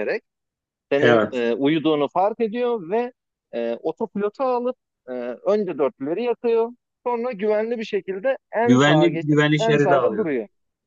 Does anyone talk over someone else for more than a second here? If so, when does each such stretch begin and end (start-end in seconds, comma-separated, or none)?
8.7-10.3